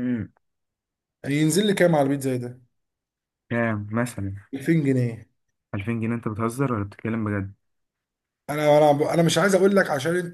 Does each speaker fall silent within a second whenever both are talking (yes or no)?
yes